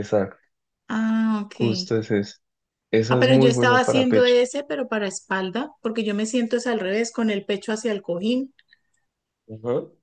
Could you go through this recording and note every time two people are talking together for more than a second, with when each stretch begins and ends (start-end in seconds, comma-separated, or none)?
3.1-4.3